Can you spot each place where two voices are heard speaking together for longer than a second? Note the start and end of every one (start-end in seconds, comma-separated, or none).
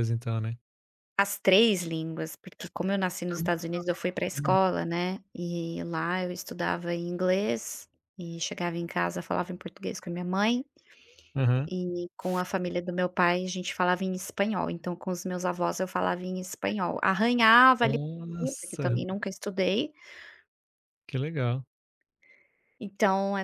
3.3-4.7, 17.8-19.0